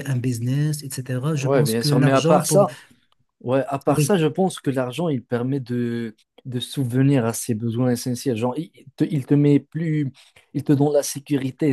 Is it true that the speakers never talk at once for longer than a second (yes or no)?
no